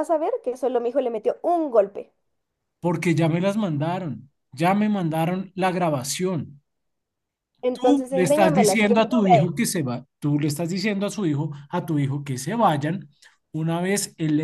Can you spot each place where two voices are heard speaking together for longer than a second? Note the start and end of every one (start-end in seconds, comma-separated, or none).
7.7-9.5